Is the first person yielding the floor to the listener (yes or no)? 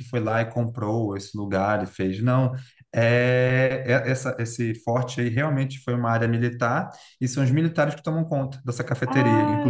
yes